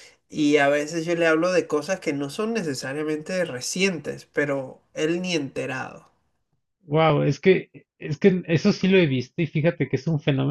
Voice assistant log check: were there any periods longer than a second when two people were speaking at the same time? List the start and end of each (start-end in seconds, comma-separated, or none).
none